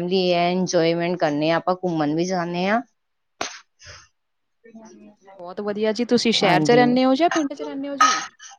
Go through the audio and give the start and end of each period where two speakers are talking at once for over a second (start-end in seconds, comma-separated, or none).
none